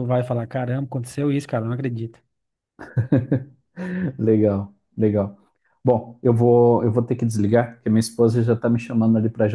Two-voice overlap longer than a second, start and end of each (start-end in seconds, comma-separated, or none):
none